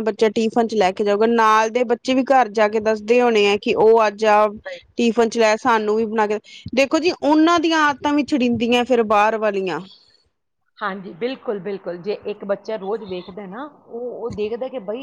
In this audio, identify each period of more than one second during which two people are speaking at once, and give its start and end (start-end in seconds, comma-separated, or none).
none